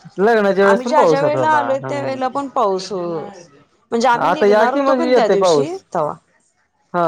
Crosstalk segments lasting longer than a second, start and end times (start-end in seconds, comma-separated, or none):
0.7-2.4, 4.3-5.8